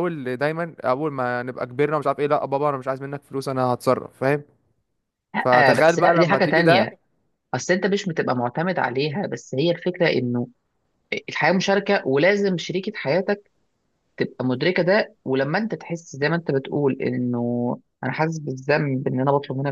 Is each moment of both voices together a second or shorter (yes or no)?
no